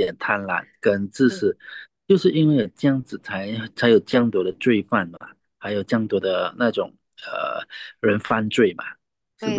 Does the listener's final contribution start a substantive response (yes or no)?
yes